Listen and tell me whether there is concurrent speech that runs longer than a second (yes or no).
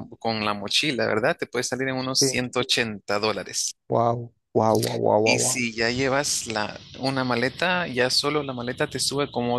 no